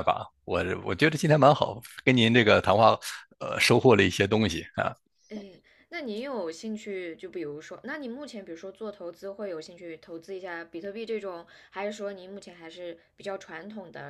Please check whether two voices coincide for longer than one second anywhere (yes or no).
no